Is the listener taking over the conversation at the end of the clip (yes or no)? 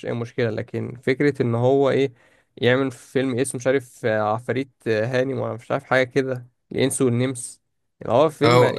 yes